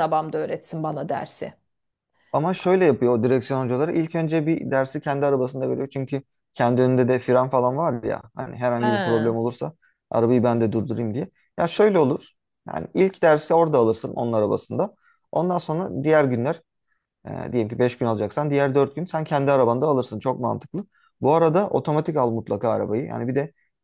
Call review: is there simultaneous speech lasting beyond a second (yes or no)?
no